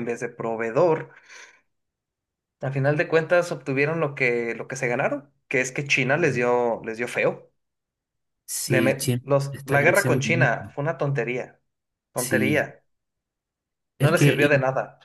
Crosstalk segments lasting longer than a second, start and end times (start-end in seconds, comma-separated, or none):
8.7-10.8